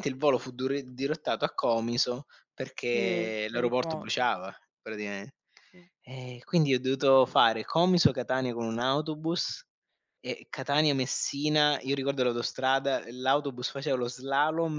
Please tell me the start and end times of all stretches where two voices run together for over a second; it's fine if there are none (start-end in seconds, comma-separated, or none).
2.9-4.3